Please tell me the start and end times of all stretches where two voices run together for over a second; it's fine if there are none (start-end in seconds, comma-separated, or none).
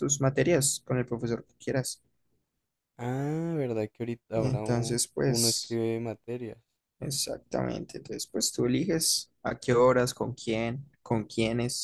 4.3-5.8